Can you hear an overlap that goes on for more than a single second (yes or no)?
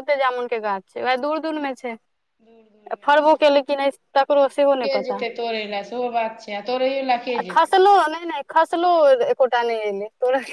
no